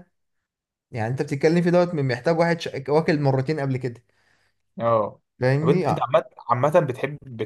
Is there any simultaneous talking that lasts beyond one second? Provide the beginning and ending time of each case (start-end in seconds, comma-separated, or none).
none